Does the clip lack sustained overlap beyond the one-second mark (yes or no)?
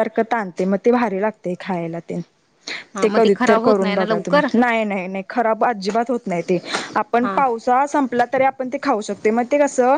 no